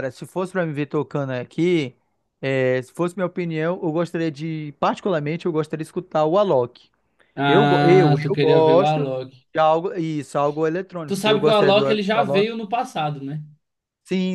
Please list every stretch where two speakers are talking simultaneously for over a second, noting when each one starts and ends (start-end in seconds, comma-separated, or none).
7.5-9.1, 11.0-12.5